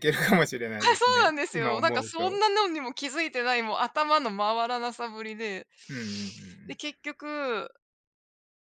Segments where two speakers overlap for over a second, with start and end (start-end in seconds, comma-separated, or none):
0.8-2.4